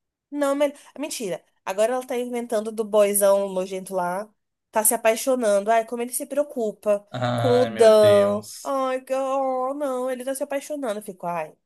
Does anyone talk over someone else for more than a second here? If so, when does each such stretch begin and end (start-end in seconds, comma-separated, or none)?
7.1-8.8